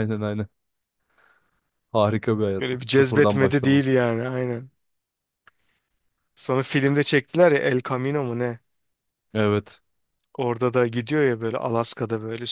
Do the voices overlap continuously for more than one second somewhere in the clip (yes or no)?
yes